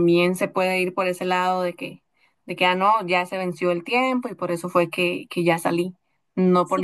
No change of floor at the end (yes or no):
no